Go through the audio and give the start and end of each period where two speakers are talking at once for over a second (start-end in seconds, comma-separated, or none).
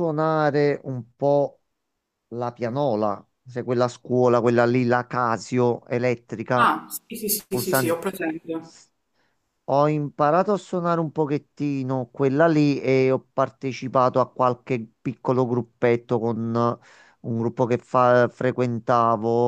none